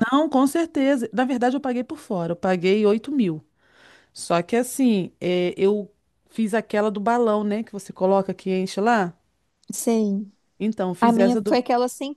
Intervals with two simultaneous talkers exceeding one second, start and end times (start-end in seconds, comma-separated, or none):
none